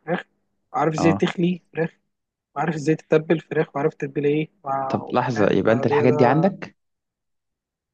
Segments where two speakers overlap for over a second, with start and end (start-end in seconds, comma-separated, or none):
4.9-6.5